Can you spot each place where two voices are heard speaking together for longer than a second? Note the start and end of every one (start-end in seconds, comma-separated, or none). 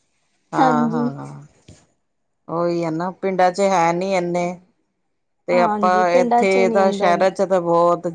5.5-7.2